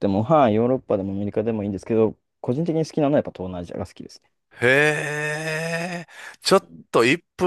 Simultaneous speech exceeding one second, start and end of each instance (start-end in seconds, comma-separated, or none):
none